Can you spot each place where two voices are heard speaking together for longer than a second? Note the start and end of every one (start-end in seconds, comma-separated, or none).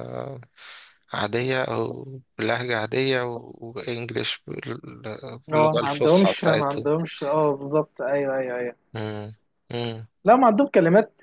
5.5-6.9